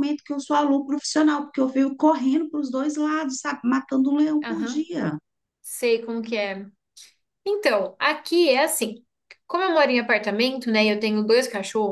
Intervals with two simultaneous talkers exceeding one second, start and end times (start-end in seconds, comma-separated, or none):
none